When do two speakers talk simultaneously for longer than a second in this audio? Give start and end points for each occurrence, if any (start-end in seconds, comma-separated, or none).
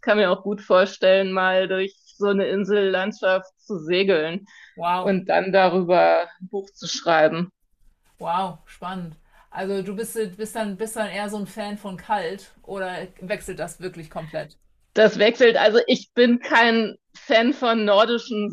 none